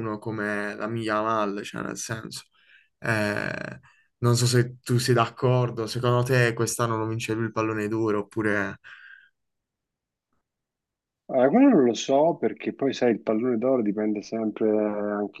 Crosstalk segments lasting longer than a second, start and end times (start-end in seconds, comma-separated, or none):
none